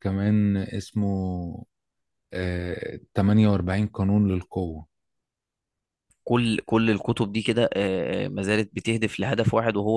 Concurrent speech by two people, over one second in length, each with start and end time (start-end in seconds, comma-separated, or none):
none